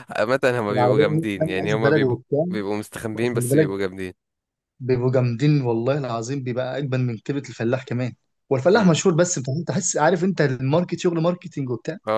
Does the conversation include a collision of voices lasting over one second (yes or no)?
yes